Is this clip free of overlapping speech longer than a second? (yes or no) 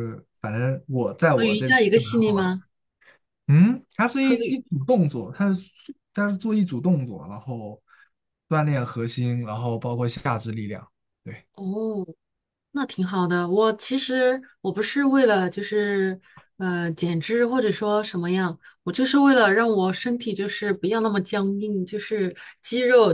no